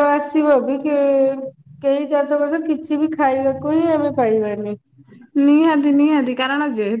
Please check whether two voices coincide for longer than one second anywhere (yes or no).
no